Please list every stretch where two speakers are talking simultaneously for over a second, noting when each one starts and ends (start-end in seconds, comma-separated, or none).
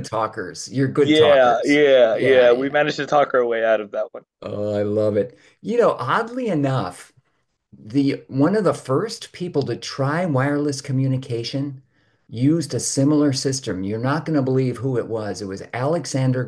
1.0-2.8